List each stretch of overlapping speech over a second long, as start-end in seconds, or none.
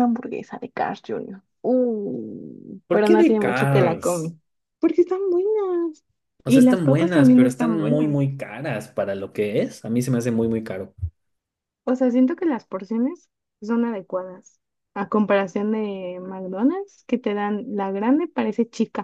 2.9-4.3, 6.4-8.3